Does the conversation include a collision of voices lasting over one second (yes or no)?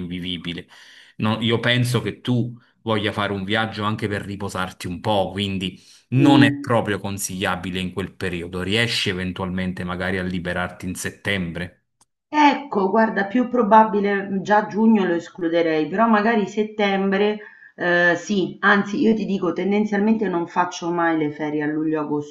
no